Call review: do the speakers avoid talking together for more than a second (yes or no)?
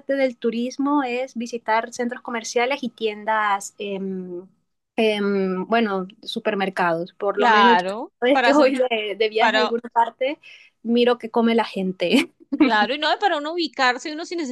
no